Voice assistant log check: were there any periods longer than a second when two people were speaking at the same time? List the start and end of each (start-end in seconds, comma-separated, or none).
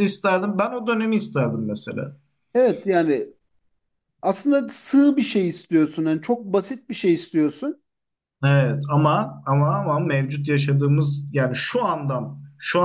none